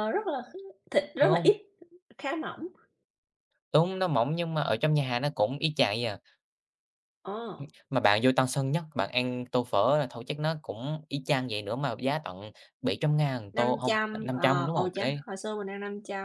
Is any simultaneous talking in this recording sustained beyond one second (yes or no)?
yes